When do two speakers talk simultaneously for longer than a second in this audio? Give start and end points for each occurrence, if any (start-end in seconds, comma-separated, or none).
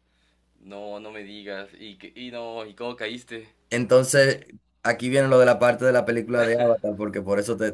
none